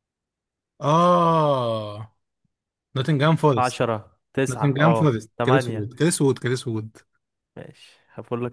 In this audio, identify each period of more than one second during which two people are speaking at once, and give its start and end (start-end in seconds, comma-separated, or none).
4.5-5.9